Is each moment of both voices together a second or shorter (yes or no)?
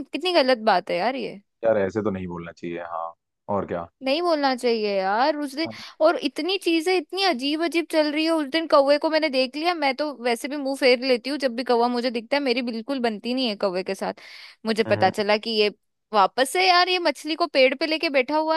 yes